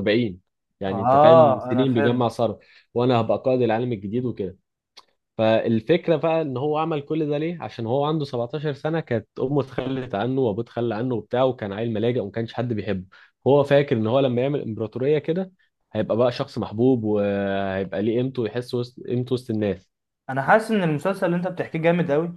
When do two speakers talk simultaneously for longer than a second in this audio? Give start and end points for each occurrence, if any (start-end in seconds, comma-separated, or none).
0.9-2.2